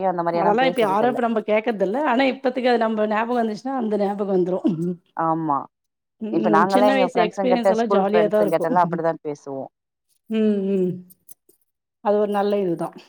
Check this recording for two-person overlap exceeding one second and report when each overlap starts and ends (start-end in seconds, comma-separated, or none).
6.7-8.8